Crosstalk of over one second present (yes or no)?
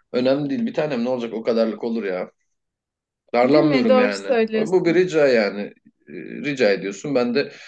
yes